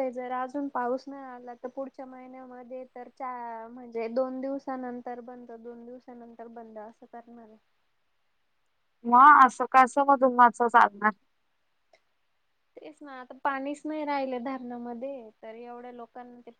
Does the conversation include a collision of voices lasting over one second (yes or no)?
no